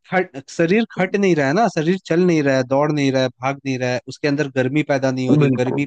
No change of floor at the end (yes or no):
yes